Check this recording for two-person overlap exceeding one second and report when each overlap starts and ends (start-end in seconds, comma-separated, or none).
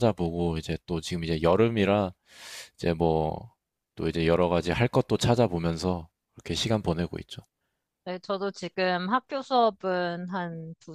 none